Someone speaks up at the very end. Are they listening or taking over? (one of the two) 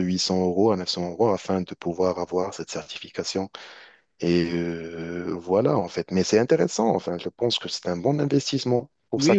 taking over